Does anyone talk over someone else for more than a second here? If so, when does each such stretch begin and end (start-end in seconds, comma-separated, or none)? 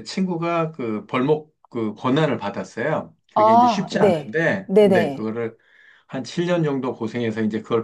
3.3-5.3